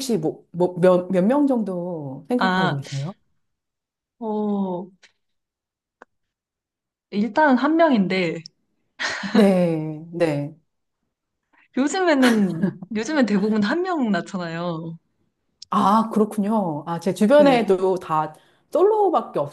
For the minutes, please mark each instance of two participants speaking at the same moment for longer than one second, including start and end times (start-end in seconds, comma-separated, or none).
none